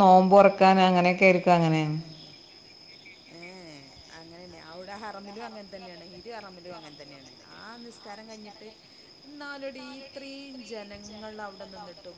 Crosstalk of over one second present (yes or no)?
no